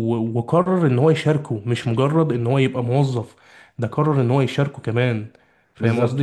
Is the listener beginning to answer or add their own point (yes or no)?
yes